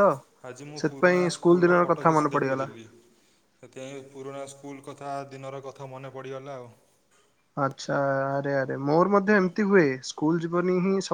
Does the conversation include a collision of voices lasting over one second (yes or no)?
yes